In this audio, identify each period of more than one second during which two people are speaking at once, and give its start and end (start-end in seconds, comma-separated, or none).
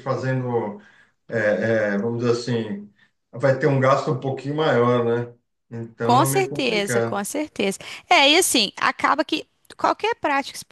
6.0-7.2